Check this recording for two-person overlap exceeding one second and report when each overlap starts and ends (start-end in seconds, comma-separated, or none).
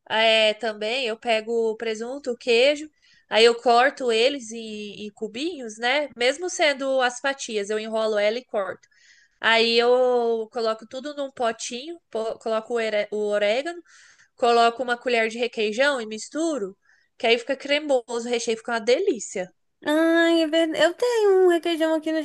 none